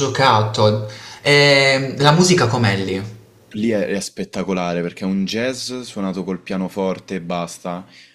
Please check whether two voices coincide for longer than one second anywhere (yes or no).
no